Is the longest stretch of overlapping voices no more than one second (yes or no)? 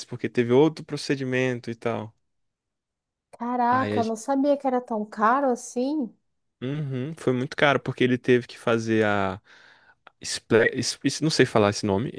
yes